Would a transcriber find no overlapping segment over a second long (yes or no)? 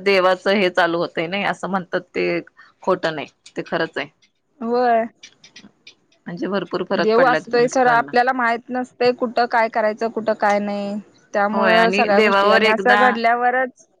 no